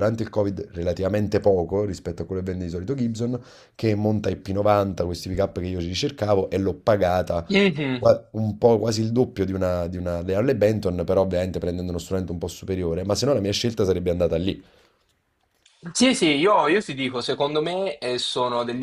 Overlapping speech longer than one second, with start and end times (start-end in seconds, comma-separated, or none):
none